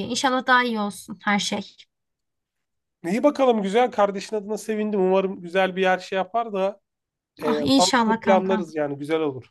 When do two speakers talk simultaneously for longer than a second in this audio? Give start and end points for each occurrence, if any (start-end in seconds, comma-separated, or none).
7.4-8.6